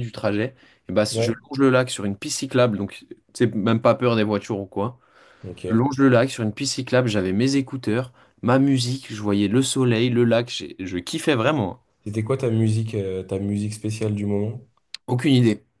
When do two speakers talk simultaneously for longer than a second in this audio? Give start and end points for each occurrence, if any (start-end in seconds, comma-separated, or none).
none